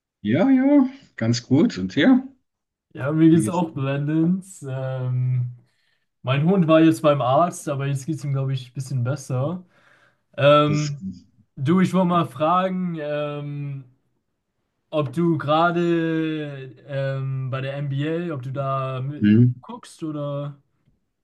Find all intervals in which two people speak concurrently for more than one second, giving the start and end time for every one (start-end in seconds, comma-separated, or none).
none